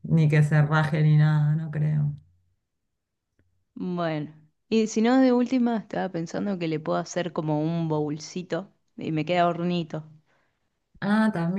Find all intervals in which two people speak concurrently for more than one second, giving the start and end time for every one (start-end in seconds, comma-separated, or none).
none